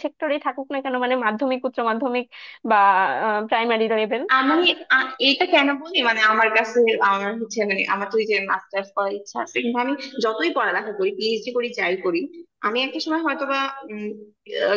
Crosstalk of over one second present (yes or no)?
no